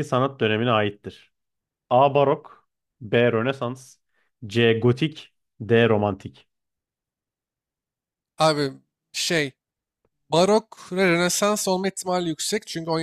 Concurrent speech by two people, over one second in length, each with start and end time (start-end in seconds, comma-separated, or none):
none